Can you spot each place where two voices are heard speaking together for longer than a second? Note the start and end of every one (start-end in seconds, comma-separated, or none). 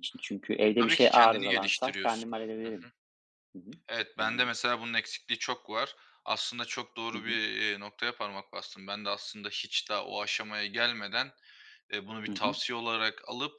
0.8-2.3